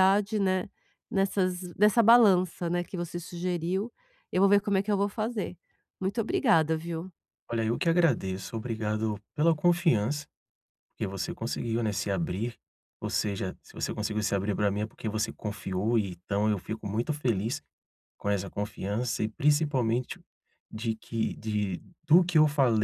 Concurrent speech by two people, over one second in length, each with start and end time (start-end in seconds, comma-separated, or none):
none